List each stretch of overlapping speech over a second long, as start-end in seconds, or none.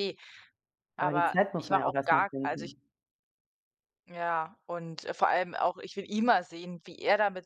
1.0-2.7